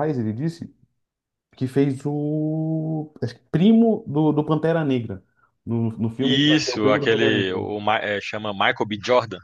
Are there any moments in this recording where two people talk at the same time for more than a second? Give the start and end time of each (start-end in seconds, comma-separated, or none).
6.2-7.7